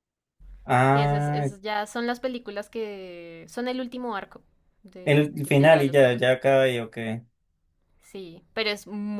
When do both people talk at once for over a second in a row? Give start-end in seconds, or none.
5.0-6.3